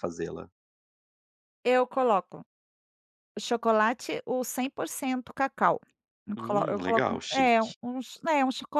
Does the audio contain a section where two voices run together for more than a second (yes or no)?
yes